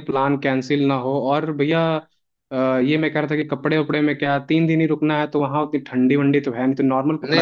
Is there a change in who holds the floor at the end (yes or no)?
yes